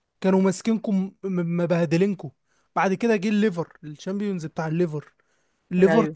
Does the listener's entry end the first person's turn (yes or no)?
no